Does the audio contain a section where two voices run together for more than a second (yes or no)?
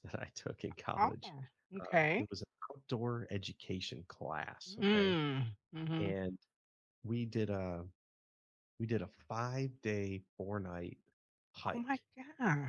no